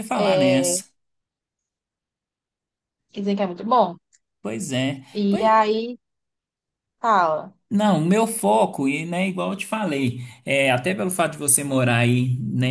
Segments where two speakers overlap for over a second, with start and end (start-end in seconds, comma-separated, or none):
none